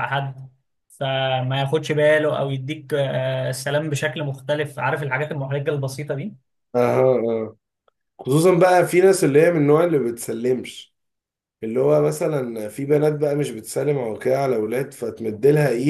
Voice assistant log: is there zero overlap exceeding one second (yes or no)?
yes